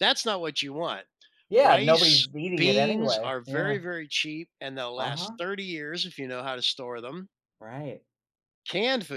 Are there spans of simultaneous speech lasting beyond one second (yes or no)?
yes